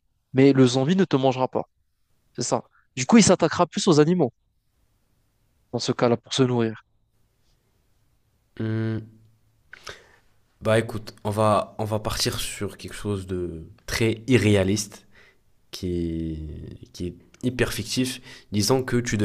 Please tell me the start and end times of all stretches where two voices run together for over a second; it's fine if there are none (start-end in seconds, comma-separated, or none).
none